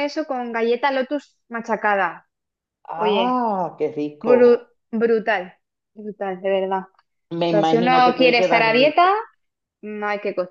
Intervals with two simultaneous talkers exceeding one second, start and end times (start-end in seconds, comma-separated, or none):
7.4-9.1